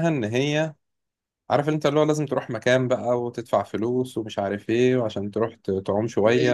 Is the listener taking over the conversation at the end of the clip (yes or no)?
yes